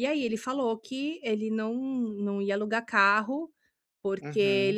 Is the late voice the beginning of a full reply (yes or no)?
no